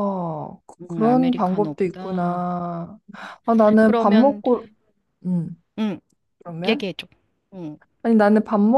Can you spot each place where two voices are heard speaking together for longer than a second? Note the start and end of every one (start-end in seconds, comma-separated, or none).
0.8-2.4